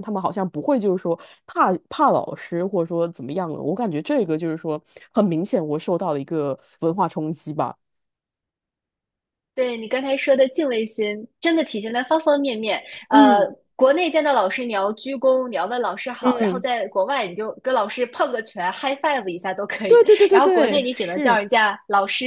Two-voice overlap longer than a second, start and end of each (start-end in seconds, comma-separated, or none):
19.9-21.4